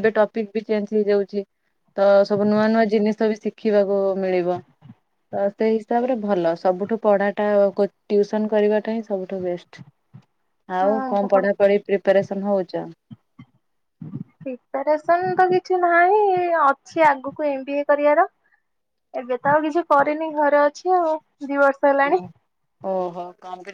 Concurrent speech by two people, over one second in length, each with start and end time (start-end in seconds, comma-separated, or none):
none